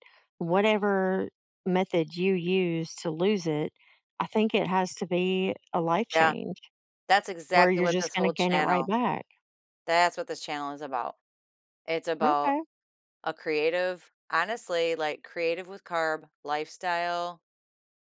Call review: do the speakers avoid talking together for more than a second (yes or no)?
no